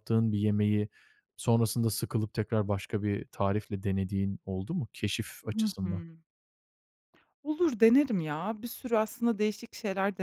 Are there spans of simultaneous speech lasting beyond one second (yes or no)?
no